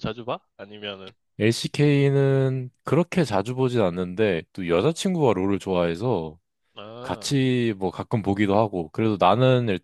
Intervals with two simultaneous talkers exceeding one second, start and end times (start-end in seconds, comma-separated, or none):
none